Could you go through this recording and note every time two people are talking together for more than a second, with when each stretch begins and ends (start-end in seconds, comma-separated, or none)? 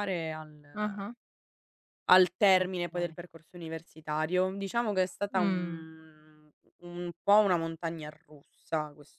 none